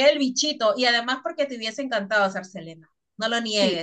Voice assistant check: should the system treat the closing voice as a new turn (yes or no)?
yes